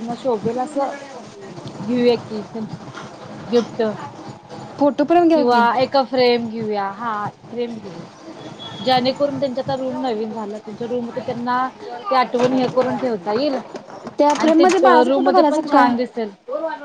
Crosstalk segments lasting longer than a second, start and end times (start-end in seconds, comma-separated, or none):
14.4-15.9